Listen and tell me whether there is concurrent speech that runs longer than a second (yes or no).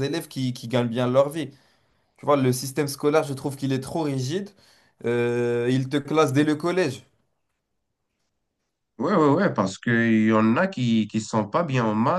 no